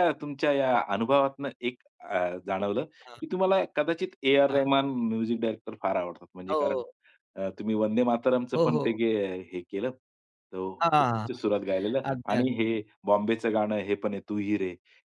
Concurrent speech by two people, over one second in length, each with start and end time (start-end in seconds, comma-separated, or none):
none